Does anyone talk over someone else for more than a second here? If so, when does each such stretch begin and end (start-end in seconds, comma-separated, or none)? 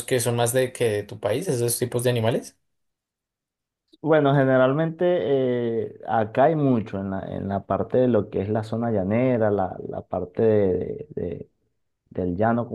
none